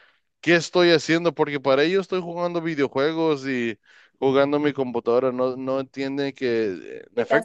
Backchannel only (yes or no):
yes